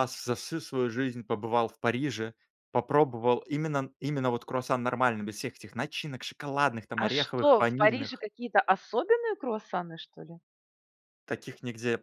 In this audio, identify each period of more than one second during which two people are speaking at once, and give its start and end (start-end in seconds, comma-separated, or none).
7.0-8.2